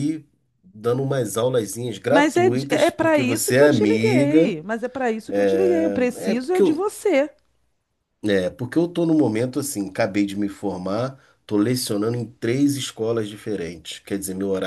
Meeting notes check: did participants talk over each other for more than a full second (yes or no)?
yes